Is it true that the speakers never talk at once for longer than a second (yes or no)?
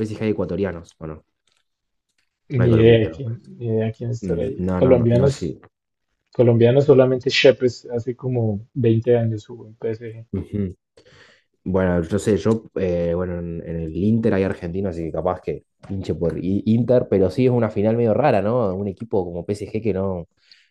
no